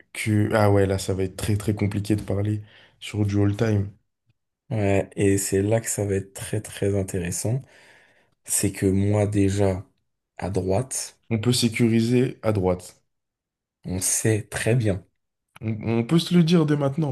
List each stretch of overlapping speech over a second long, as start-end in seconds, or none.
none